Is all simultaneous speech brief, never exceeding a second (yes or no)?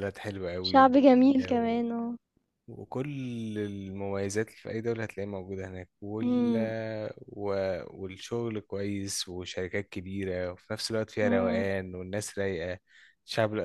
no